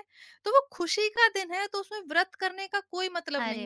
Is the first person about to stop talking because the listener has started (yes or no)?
yes